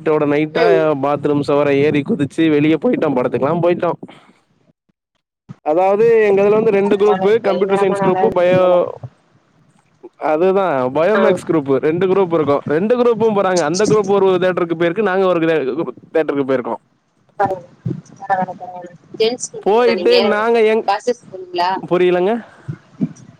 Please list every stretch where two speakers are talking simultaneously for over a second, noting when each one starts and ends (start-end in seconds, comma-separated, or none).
6.9-8.6